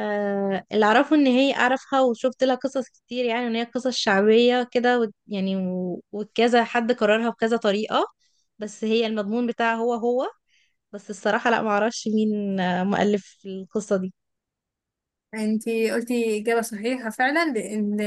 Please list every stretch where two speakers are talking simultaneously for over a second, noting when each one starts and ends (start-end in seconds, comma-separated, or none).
none